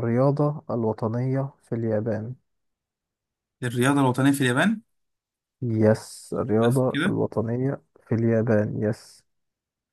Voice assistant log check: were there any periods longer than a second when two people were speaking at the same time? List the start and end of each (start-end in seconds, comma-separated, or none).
none